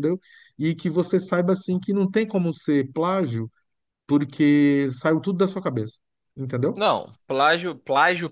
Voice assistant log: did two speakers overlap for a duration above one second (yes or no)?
no